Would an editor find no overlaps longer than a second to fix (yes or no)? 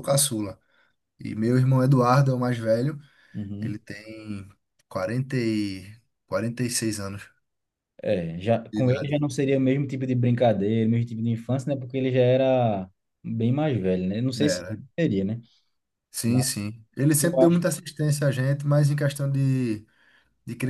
yes